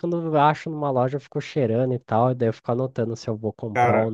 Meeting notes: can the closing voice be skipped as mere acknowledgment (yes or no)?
yes